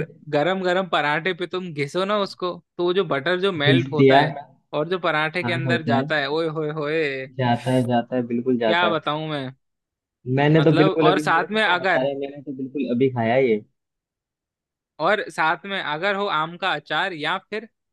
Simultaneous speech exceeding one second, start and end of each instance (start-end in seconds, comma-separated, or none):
10.6-12.1